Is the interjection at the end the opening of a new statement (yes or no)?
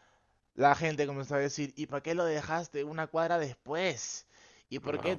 no